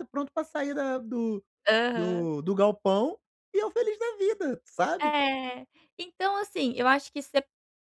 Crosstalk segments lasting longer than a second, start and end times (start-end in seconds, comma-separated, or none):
none